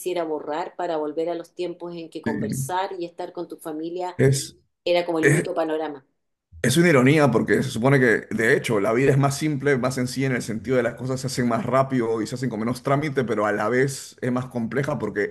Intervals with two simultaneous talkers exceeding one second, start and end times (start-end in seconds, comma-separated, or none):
none